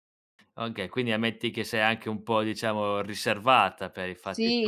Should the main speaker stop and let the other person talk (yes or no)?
yes